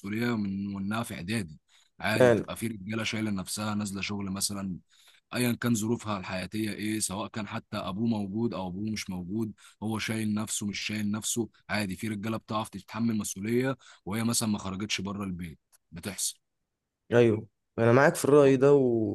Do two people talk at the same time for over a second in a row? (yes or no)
no